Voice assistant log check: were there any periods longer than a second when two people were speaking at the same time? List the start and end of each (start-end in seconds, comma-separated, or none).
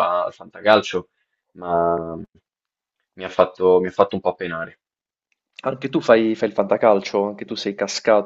none